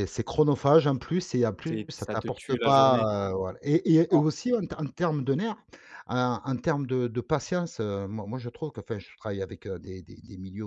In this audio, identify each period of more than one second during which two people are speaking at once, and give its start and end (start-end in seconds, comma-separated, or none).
1.7-3.1